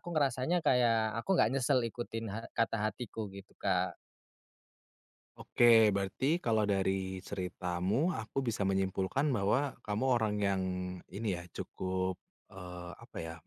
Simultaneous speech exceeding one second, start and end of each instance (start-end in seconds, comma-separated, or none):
none